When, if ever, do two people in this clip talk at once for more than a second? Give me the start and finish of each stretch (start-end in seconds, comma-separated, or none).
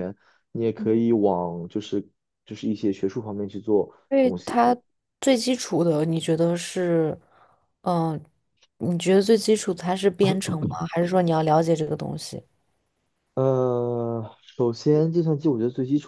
none